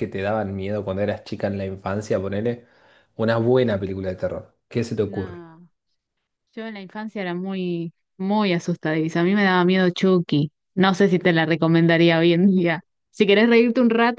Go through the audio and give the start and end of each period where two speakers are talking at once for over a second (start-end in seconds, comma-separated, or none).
none